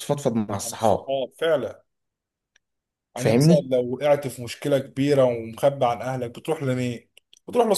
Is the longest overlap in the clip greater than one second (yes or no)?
no